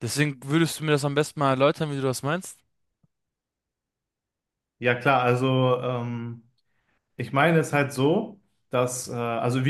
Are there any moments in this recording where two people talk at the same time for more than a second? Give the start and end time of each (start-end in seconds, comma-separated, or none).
none